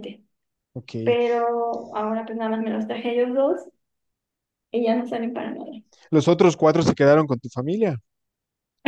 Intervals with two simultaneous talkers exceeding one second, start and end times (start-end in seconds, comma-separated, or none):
none